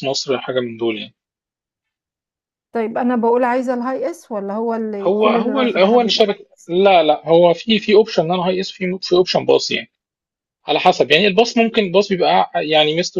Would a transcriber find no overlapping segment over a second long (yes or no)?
no